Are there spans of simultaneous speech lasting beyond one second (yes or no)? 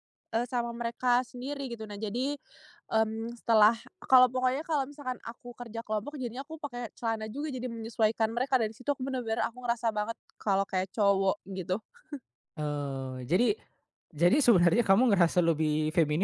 no